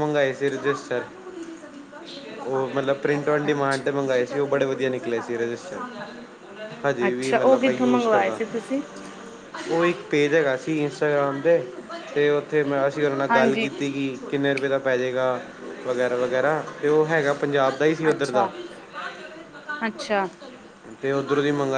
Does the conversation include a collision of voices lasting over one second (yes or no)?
yes